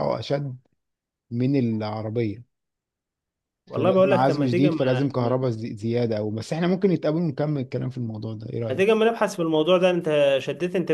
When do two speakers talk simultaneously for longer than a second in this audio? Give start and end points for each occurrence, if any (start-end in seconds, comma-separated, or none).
3.7-5.5